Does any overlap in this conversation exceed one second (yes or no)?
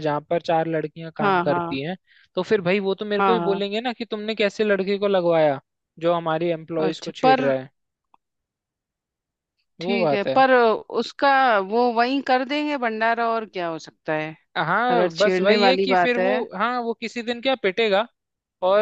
yes